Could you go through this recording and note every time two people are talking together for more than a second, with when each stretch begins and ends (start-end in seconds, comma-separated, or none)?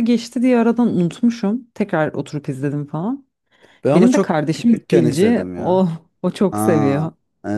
3.9-5.9